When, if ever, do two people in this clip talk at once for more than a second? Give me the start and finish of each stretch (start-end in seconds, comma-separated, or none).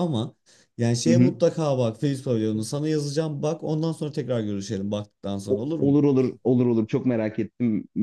none